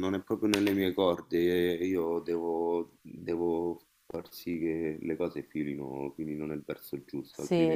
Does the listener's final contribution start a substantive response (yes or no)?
yes